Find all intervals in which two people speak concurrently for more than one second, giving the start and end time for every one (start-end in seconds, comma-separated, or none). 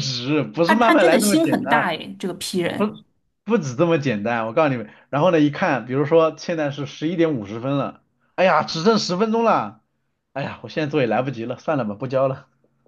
0.7-1.9